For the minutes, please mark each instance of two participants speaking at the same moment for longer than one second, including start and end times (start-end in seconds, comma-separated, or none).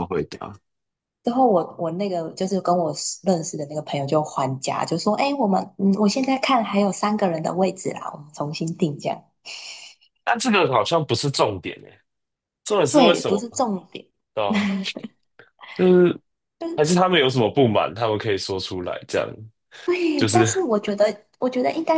none